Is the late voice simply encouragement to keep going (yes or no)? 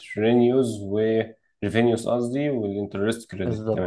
no